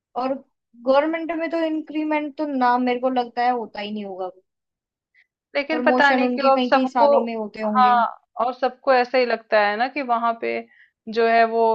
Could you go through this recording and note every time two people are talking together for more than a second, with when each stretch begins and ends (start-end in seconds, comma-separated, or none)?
5.7-7.1